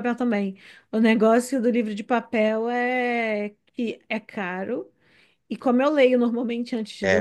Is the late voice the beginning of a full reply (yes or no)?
no